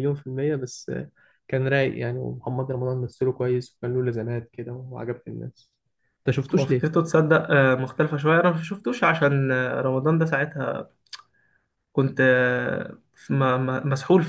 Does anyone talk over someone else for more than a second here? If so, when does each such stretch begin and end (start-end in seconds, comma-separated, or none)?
none